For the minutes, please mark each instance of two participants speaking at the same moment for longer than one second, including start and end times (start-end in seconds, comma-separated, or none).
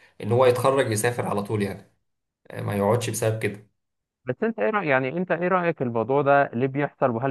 none